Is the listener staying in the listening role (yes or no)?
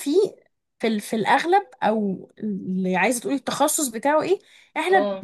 yes